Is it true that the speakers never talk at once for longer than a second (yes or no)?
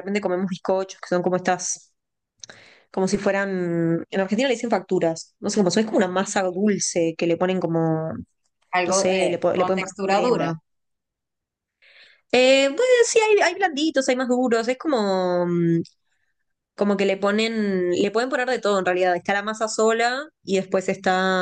no